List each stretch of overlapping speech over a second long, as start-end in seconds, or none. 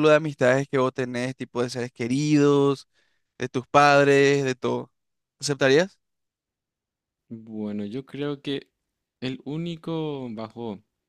none